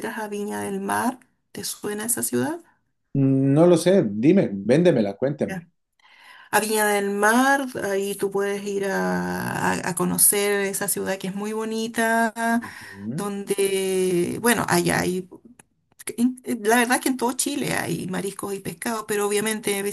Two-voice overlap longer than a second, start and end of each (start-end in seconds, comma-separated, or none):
none